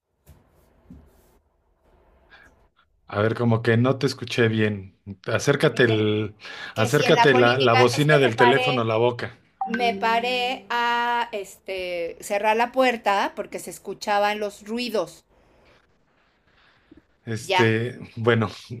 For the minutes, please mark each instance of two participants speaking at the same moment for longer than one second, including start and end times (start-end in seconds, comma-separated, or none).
6.8-8.8